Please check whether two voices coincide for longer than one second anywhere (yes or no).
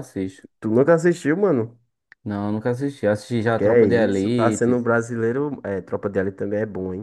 yes